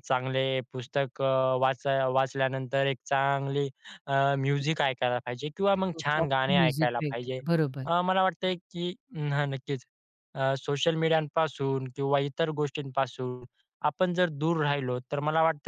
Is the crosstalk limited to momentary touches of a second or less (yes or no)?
no